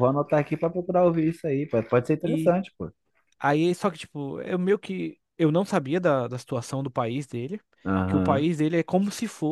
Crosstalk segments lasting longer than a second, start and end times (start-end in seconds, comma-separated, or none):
none